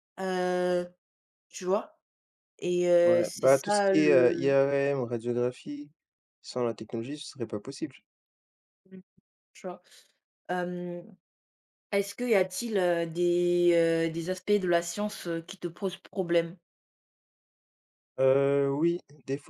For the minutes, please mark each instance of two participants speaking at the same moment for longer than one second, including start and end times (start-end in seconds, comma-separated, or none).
3.0-4.6